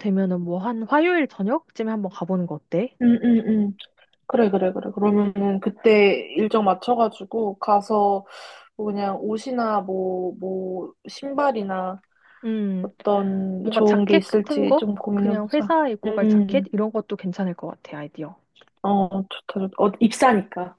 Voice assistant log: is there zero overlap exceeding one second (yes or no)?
no